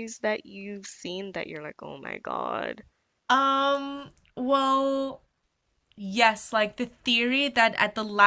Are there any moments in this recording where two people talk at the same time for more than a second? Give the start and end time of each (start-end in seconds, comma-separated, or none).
none